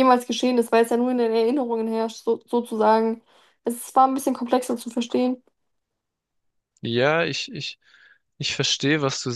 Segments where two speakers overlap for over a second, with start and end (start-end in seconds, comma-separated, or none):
none